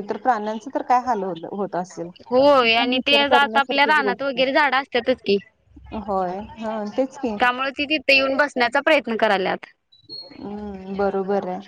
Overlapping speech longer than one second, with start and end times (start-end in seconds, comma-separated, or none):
2.3-4.4